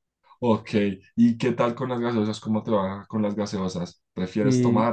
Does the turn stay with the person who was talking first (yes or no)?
yes